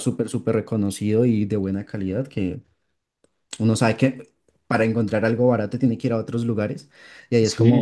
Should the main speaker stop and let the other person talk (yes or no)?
yes